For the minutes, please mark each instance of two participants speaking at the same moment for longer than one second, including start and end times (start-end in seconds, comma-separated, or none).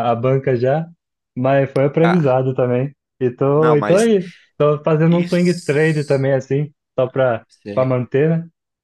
5.1-6.3